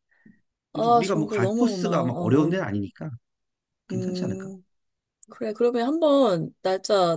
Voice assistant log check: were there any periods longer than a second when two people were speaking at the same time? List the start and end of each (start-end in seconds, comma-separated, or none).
0.7-2.6